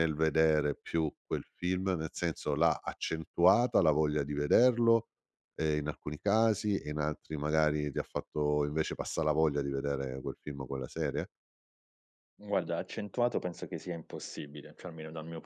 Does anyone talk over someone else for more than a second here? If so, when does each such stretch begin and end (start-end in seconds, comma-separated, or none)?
none